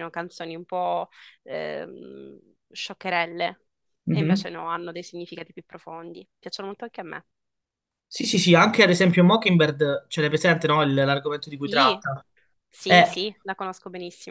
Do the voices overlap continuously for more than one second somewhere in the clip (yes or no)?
no